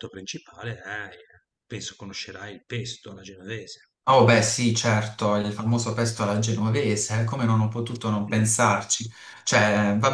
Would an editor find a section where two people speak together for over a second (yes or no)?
no